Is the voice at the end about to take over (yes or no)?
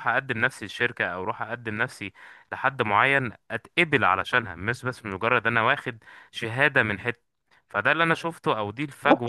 yes